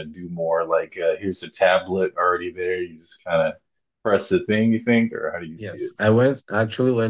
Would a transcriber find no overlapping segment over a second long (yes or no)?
yes